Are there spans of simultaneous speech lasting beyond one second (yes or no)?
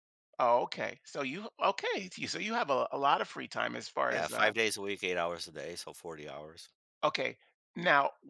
no